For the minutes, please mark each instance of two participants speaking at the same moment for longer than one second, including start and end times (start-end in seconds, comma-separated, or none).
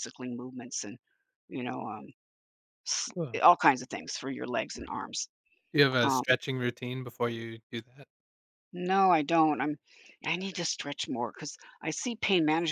none